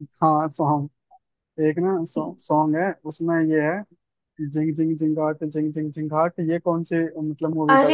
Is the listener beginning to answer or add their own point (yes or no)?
yes